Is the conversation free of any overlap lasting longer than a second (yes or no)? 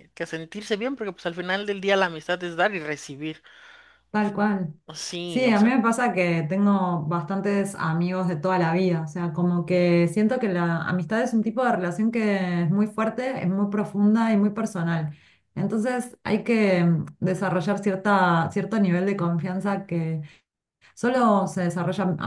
yes